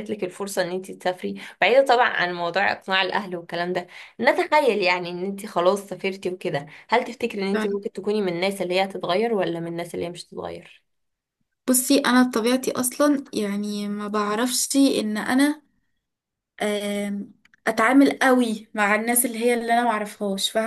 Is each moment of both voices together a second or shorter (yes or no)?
yes